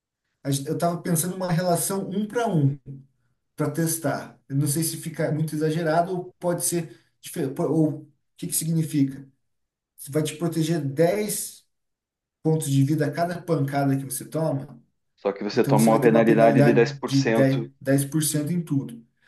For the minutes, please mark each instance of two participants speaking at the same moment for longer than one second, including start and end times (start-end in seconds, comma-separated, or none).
15.5-17.7